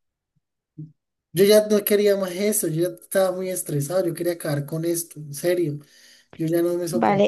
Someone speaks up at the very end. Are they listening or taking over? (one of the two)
taking over